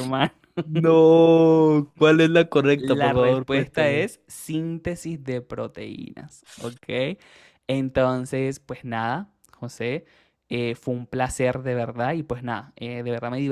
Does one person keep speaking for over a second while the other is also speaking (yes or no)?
yes